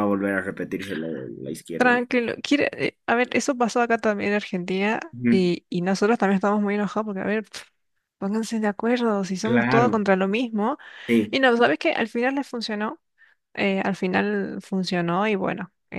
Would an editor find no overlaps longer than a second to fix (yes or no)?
yes